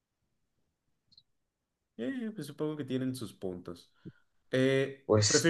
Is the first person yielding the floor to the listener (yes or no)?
no